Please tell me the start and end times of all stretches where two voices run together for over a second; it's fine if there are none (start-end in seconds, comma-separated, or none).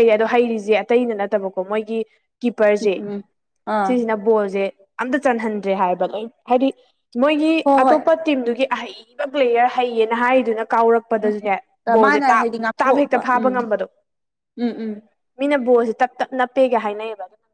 12.0-13.5